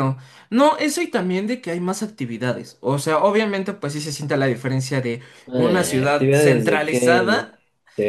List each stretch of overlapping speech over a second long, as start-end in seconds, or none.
5.5-7.5